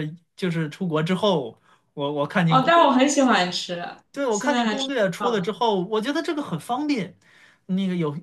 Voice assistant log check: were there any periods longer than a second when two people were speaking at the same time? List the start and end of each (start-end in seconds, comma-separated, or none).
4.3-5.5